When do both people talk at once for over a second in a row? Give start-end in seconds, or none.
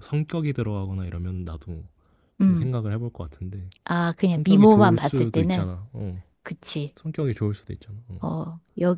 4.3-5.7